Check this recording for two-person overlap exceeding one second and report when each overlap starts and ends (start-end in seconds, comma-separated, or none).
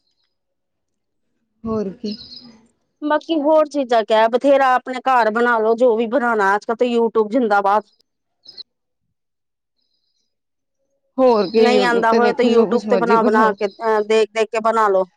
11.6-13.5